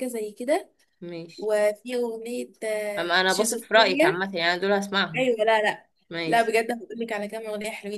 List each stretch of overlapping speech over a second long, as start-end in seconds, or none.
3.0-4.2